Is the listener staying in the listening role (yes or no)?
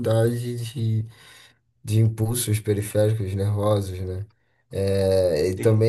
yes